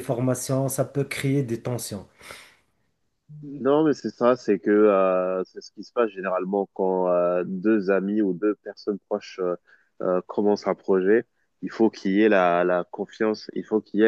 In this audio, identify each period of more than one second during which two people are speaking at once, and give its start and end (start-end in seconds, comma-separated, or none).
none